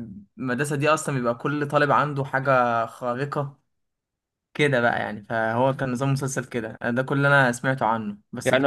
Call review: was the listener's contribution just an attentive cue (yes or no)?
yes